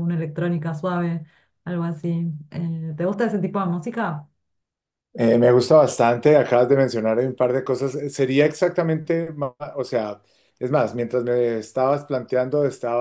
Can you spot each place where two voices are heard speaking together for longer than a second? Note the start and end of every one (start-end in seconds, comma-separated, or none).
none